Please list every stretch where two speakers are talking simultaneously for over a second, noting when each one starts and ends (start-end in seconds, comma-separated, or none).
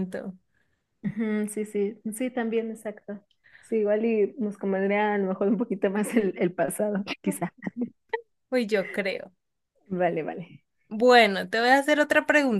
none